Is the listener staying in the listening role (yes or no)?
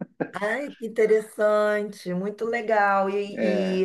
yes